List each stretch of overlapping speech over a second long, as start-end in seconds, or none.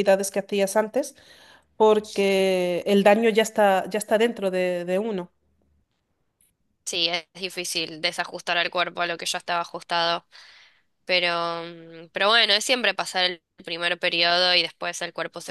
none